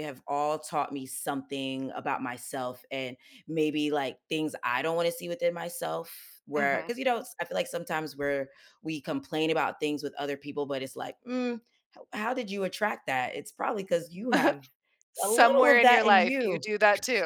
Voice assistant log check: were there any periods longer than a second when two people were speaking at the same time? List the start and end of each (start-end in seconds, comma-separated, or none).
15.2-16.6